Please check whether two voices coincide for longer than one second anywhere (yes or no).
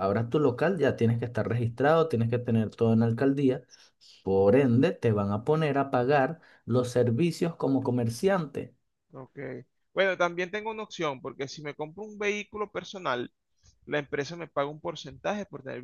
no